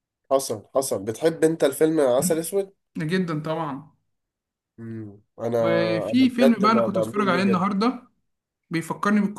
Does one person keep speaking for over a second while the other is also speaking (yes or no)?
yes